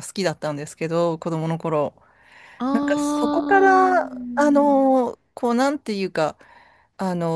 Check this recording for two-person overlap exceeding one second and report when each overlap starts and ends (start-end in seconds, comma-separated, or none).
2.7-4.8